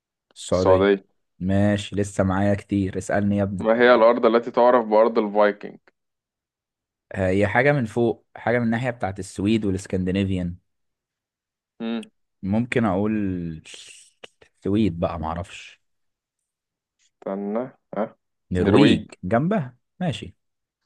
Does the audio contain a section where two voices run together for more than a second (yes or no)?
no